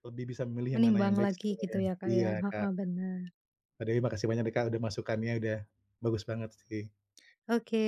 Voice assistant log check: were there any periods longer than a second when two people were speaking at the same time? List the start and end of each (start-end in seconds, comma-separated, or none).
0.7-2.7